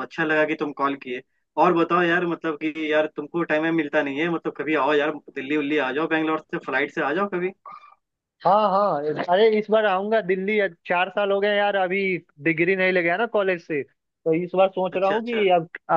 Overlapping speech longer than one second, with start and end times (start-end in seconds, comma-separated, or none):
none